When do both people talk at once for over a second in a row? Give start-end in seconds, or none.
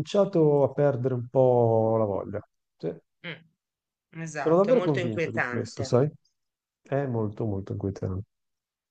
4.4-5.9